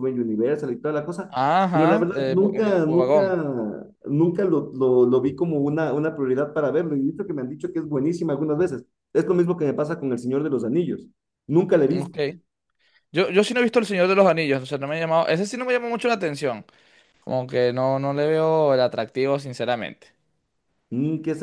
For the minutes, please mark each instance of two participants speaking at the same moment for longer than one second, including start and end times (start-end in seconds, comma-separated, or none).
1.3-3.4